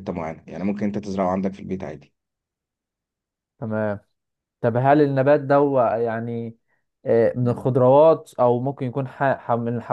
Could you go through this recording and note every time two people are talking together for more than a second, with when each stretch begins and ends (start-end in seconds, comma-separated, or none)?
none